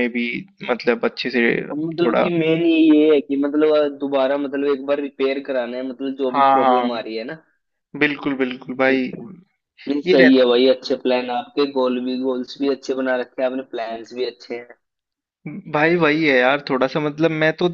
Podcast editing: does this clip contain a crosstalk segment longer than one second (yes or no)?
no